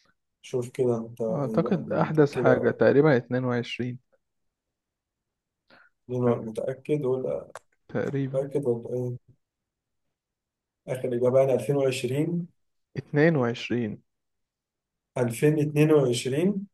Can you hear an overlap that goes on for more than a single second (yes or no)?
yes